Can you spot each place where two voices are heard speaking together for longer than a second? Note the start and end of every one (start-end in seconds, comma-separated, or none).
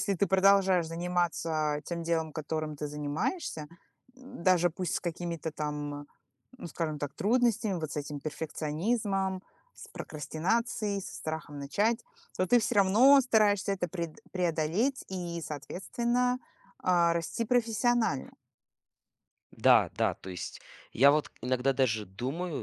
none